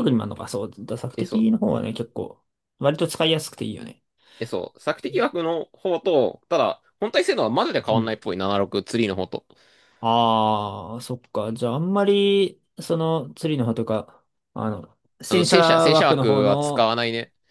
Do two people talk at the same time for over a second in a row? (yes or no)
yes